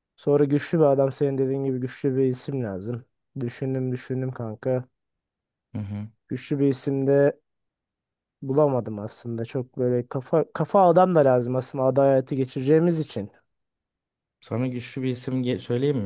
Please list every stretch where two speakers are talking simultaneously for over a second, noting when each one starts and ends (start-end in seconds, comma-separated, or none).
none